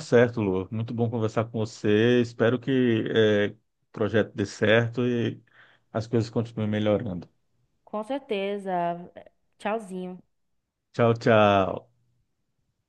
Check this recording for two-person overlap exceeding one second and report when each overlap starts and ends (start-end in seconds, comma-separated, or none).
none